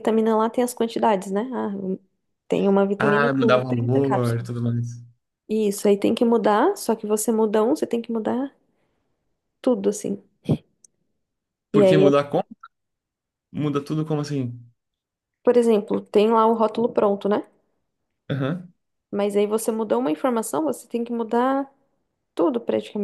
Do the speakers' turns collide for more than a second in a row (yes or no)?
yes